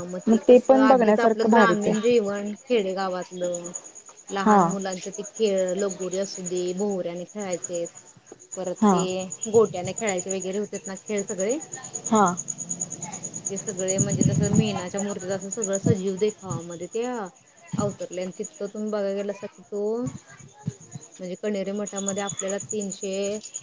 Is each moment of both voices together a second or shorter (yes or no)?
no